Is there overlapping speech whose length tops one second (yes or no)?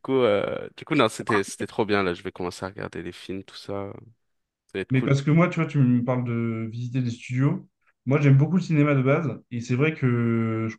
no